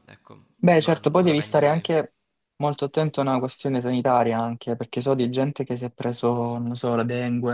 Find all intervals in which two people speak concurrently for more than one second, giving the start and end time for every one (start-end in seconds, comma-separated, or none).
0.6-2.0